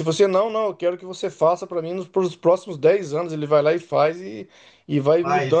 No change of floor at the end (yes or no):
yes